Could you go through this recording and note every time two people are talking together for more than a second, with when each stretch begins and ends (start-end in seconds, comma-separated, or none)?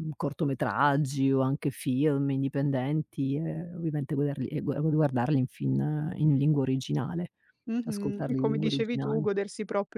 7.8-9.3